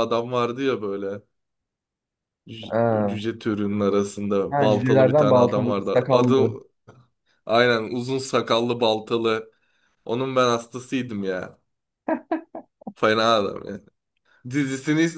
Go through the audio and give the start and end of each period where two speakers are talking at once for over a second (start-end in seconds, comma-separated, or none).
4.5-6.5